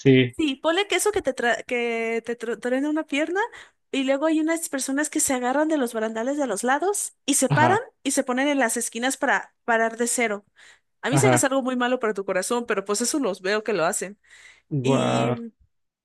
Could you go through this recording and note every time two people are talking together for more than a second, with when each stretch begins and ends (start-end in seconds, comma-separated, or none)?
none